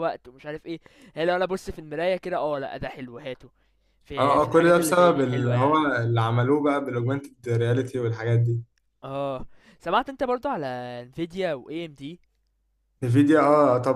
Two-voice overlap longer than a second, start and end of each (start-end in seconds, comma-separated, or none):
4.2-5.8